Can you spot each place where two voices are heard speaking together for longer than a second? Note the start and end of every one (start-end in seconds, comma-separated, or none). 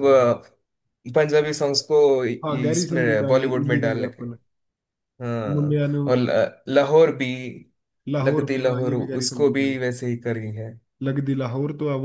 2.5-4.2, 8.2-9.7